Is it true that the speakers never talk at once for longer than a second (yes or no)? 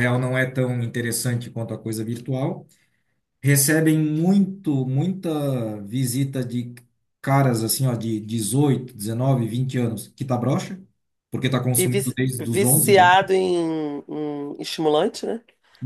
no